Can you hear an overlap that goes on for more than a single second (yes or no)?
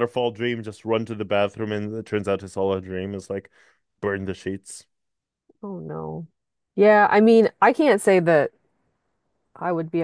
no